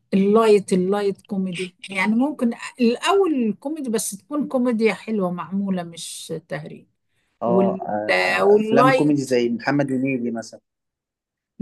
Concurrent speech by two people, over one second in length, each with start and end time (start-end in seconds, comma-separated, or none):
7.4-9.3